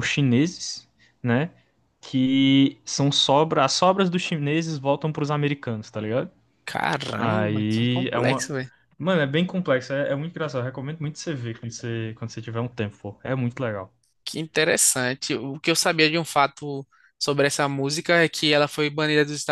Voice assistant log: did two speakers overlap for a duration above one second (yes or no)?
yes